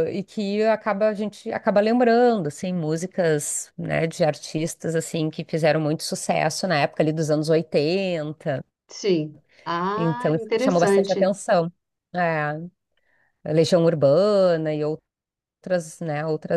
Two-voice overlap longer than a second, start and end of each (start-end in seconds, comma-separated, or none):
9.9-11.3